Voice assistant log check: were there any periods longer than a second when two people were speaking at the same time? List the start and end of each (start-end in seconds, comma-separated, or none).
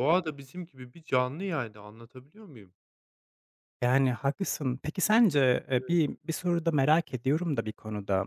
none